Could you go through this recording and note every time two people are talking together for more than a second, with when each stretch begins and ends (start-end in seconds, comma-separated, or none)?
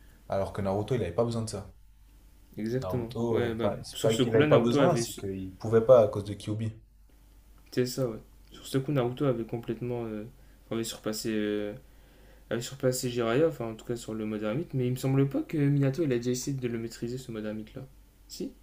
2.8-5.2